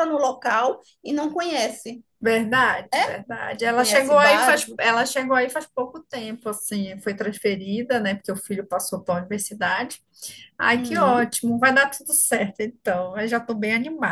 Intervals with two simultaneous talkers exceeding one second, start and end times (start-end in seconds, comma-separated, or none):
3.7-5.0